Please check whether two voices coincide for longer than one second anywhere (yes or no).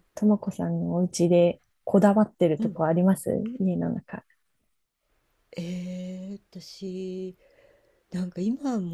no